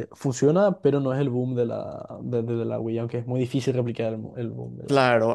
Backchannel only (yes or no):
no